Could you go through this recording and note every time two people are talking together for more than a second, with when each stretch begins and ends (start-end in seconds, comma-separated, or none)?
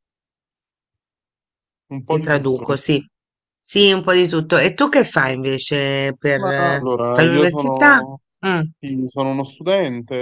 6.3-8.0